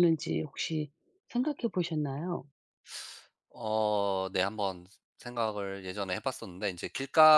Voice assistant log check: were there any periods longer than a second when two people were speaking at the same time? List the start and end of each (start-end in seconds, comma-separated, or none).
none